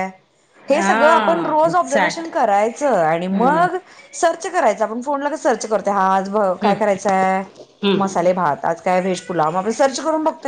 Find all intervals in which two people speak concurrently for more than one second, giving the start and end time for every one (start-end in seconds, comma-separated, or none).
0.8-2.3